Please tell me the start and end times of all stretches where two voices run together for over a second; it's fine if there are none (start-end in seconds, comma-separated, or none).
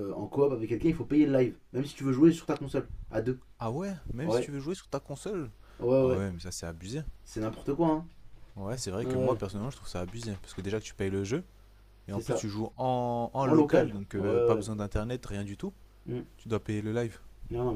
13.4-14.7